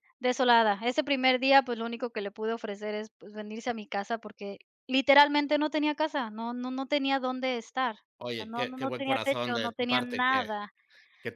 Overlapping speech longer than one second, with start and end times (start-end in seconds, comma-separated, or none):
8.2-10.5